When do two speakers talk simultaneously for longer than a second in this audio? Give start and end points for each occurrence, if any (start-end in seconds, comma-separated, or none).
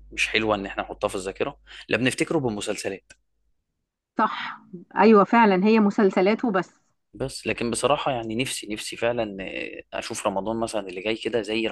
none